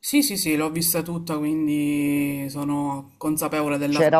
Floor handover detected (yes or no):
yes